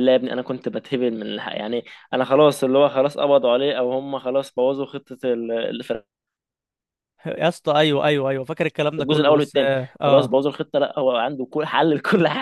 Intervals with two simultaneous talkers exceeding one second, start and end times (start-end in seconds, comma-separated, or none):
9.0-10.4